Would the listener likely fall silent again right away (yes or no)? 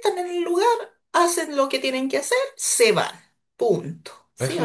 no